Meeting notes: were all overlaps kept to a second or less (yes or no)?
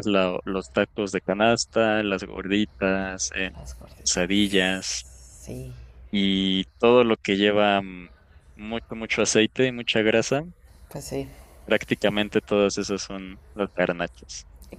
yes